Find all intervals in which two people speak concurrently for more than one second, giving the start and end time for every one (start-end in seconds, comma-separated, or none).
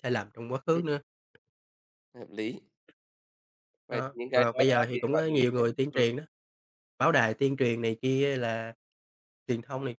3.9-6.1